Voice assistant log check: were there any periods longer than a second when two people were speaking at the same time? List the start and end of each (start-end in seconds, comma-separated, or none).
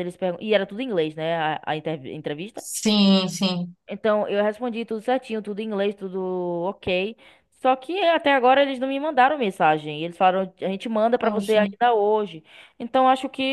none